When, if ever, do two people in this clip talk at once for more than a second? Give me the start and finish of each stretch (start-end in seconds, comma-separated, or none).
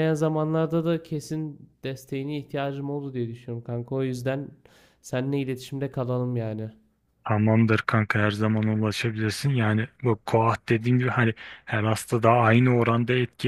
none